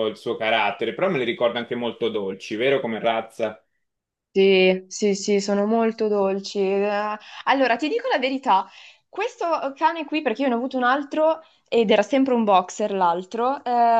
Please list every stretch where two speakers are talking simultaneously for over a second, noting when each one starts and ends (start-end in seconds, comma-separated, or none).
none